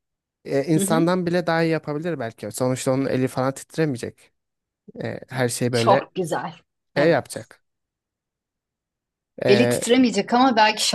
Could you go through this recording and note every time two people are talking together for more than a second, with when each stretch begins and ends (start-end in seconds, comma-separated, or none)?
none